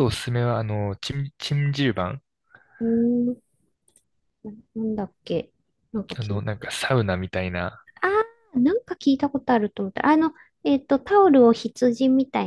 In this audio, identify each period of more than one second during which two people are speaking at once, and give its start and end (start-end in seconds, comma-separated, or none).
none